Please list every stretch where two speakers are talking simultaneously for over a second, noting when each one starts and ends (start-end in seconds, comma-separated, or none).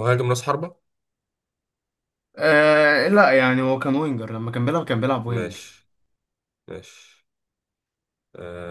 none